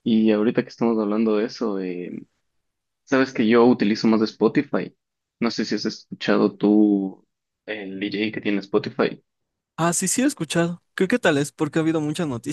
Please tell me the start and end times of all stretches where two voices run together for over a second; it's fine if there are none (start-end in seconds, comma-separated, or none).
none